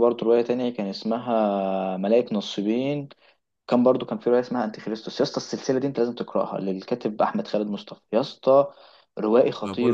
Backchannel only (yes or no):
no